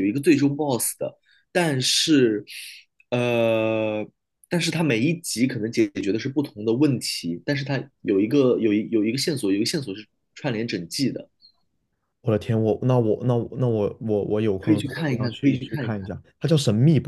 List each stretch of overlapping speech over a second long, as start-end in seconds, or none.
14.6-16.1